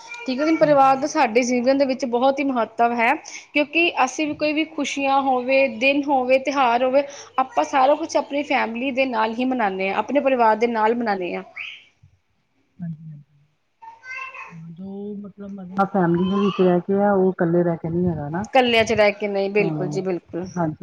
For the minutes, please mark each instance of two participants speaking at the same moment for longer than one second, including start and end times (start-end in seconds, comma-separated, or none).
none